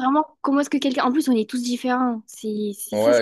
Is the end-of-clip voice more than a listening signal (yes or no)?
yes